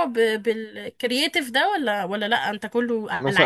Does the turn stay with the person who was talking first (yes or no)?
no